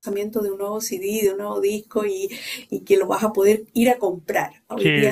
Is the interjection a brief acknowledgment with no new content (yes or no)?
no